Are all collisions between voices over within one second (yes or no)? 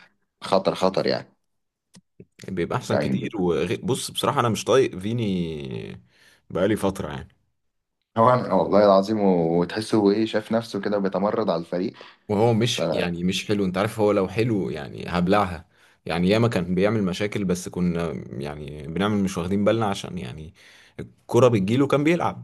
yes